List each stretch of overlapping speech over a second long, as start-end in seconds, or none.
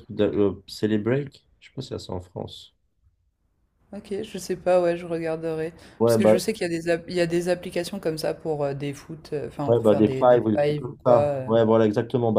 9.7-11.5